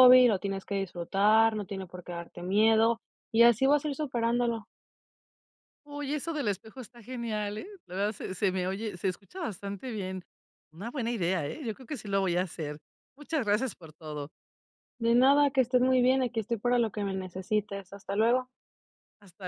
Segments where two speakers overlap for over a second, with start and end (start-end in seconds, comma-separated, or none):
none